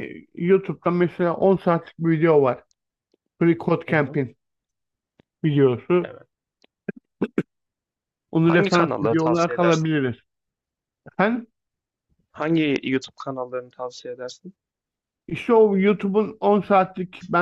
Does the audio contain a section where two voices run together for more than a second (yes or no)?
yes